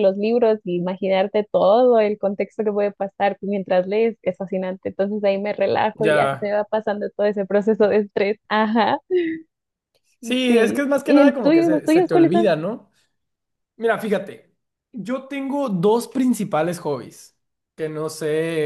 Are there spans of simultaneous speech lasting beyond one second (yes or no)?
yes